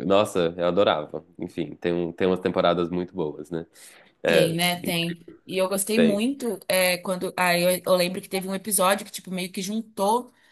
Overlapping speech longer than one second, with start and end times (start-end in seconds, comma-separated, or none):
none